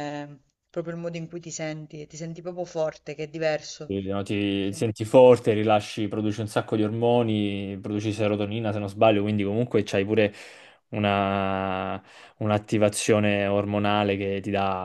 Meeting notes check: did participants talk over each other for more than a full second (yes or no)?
no